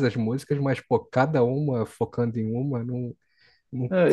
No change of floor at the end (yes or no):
no